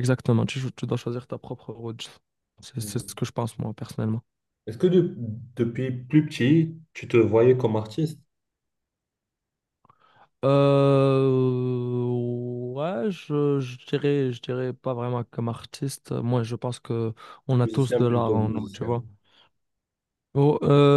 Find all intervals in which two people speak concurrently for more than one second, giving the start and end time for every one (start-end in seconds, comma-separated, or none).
17.6-18.9